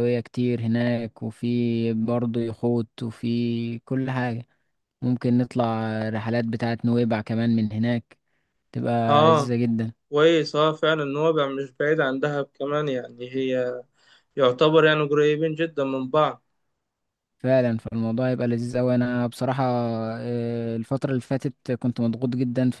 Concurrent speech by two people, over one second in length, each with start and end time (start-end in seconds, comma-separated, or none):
none